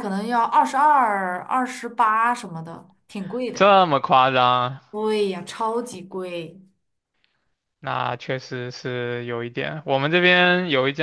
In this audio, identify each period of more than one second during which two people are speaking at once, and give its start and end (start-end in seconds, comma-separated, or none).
none